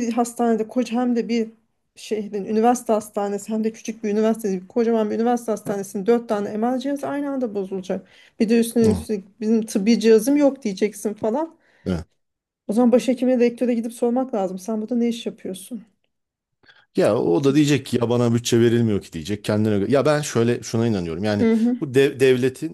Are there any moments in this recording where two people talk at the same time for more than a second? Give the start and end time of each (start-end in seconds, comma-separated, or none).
none